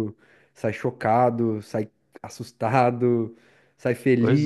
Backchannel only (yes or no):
yes